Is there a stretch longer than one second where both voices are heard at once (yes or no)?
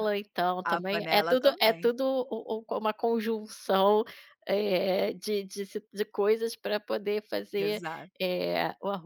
yes